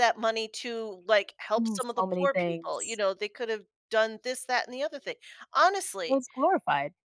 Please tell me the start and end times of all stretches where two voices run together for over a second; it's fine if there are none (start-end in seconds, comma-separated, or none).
1.6-3.0